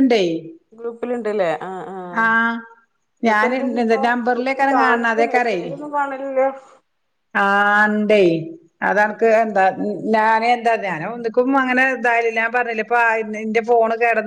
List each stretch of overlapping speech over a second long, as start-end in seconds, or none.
3.3-5.1